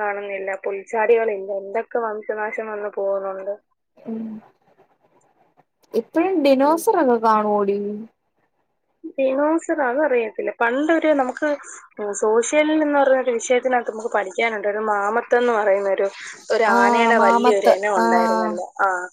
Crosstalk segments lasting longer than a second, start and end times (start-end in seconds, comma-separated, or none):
16.7-18.5